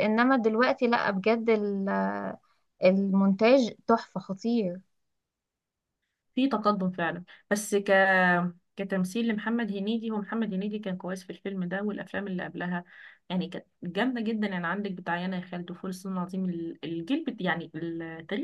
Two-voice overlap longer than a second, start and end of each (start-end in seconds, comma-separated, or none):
none